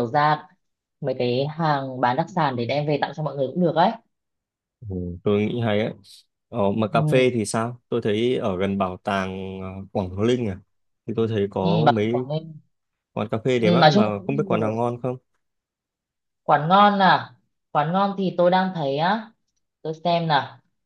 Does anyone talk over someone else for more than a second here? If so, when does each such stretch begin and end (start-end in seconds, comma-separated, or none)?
13.6-14.9